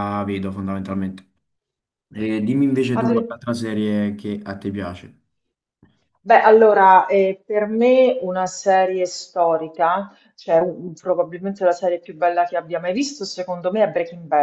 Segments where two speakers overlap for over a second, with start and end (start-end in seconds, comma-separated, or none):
none